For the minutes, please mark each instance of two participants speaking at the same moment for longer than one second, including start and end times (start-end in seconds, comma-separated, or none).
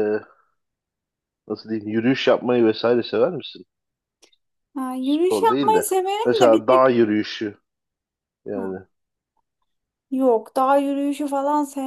5.0-7.0